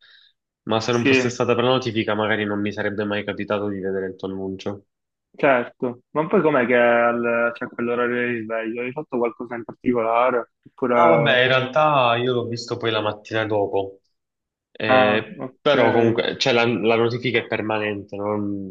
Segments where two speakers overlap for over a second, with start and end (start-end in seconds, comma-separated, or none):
14.9-16.2